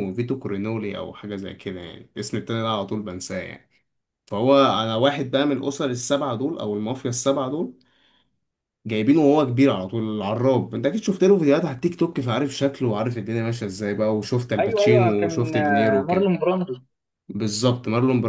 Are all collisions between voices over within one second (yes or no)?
no